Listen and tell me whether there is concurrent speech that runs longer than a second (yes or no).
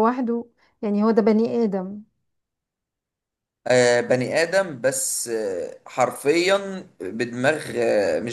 no